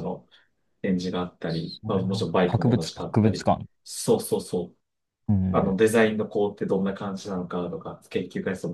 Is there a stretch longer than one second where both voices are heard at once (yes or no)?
yes